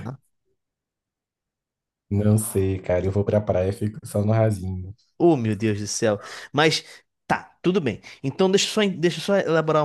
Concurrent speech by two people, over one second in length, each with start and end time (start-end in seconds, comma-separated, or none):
none